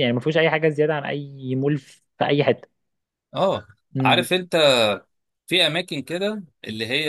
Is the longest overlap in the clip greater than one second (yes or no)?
no